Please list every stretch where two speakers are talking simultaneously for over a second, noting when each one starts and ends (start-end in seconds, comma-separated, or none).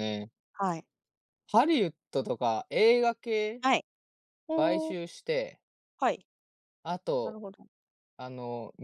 none